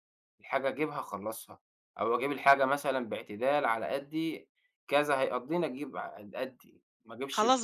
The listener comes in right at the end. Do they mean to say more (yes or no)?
yes